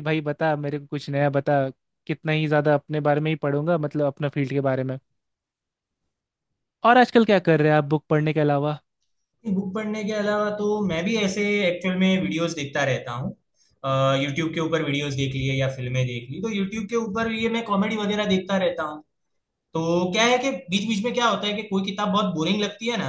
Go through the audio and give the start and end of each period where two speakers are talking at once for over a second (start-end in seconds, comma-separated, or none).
none